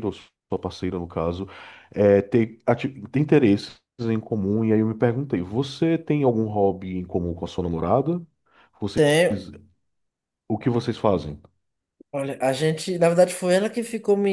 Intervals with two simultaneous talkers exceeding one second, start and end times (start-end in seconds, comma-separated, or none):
none